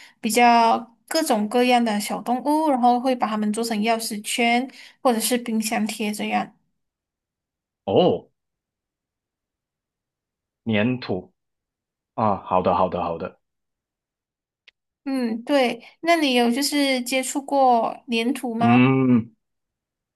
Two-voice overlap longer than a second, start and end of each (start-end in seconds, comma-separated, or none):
none